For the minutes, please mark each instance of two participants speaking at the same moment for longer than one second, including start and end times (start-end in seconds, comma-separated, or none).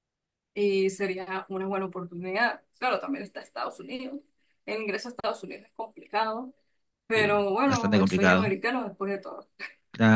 7.2-8.5